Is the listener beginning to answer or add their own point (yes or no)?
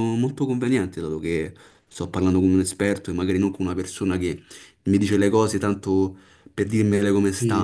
yes